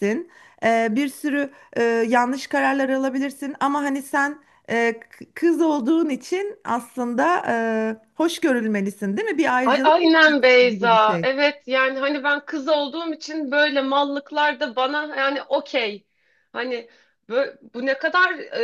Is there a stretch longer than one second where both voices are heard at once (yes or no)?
yes